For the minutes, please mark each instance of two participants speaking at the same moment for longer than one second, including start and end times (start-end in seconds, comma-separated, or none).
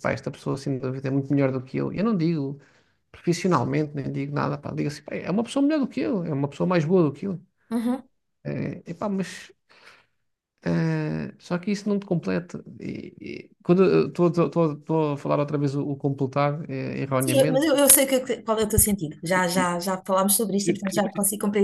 none